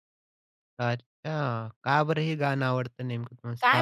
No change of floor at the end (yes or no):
no